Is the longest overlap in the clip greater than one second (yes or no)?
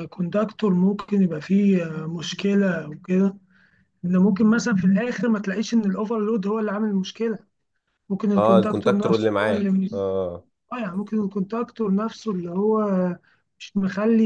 yes